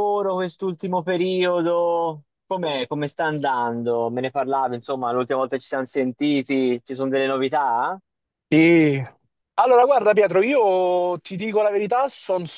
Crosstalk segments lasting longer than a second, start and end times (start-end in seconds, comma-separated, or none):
none